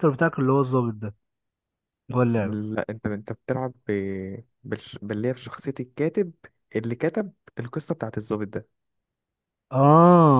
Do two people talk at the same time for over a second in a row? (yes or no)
no